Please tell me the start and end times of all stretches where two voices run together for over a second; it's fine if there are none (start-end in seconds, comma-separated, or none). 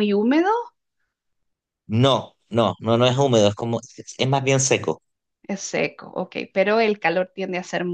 none